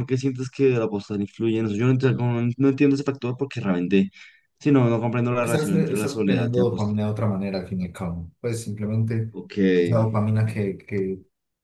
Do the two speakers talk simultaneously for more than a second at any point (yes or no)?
yes